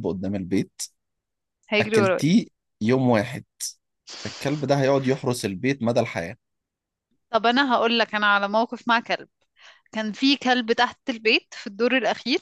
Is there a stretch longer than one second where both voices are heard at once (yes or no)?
no